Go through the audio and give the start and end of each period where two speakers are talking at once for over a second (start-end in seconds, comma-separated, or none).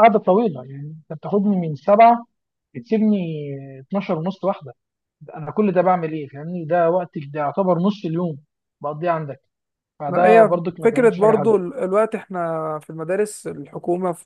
10.1-11.6